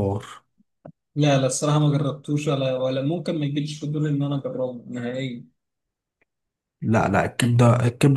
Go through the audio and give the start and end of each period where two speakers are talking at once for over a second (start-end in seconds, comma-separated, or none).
none